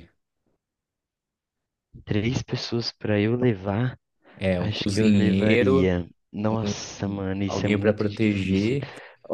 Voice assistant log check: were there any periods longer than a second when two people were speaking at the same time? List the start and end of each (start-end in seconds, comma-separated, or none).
4.6-5.9, 7.0-8.8